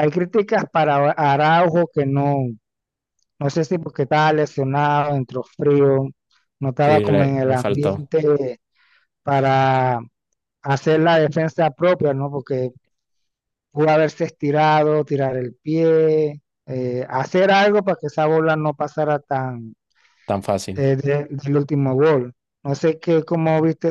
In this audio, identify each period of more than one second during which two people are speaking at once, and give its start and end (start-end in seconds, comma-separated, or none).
6.8-8.1